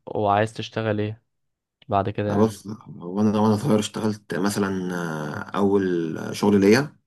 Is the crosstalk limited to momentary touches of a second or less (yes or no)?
yes